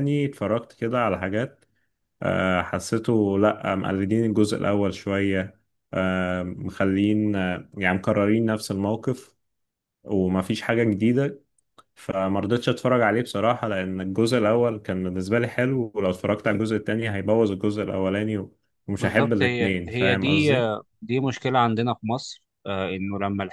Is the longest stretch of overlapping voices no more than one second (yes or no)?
no